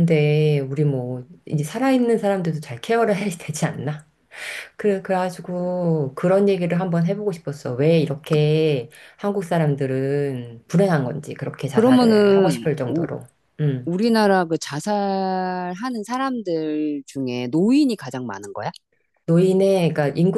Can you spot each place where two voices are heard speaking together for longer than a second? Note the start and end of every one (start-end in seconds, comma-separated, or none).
11.7-13.1